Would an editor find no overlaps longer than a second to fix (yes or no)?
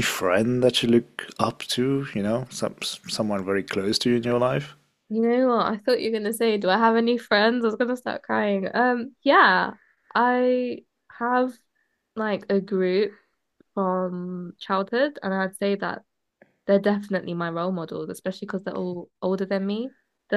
yes